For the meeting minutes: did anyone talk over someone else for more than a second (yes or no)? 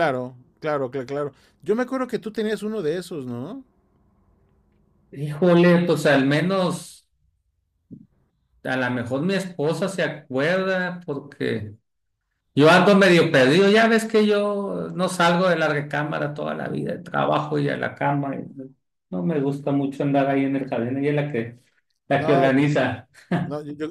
no